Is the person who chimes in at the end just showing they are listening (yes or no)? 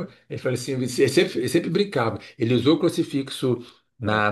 yes